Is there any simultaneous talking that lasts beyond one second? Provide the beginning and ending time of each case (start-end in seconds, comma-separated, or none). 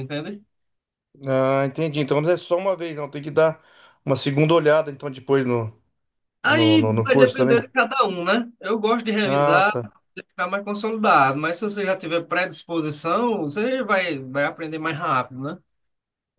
6.4-7.7